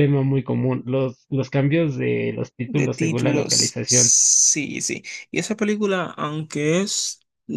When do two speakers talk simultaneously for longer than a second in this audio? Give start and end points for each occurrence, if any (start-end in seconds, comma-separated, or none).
2.7-4.2